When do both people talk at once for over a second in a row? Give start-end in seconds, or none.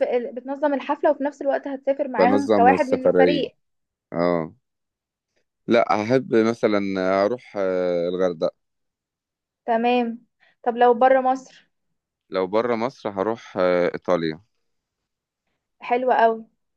2.2-3.5